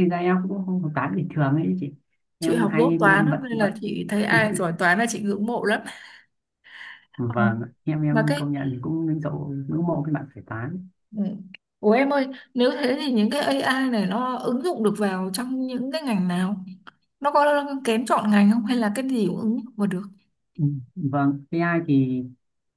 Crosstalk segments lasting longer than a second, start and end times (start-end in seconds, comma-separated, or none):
2.4-3.7